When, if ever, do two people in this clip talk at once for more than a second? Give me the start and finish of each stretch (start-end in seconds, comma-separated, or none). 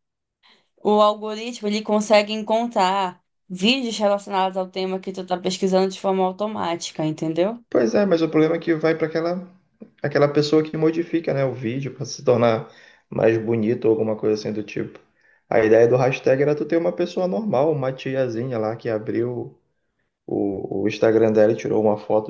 none